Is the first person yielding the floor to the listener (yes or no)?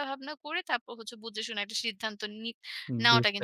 yes